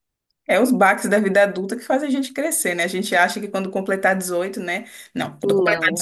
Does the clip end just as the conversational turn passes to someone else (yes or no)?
no